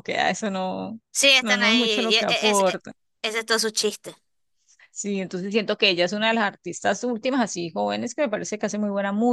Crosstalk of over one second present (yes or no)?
yes